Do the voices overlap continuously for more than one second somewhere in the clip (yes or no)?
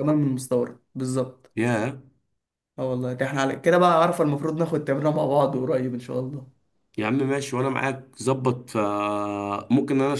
no